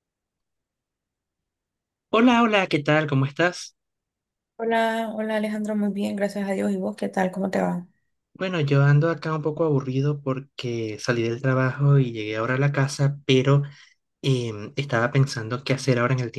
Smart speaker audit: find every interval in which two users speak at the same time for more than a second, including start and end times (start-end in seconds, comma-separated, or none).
none